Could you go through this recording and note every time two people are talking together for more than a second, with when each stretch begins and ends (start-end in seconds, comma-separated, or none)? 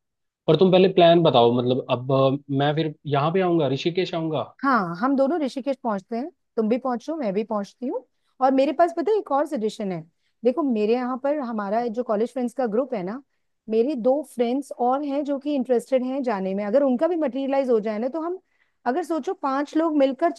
none